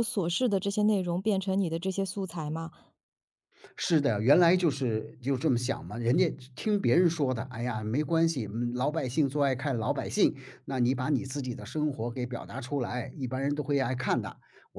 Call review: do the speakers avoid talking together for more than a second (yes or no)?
yes